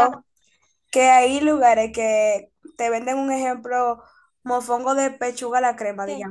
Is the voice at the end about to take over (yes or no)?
no